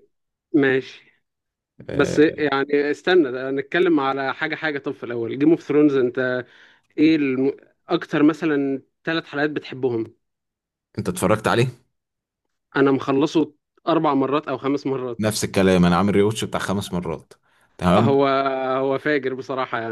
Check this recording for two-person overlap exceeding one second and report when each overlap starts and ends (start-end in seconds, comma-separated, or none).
none